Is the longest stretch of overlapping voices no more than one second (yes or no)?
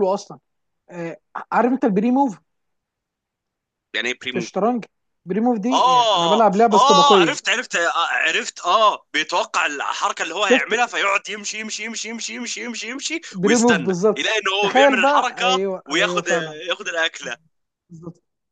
no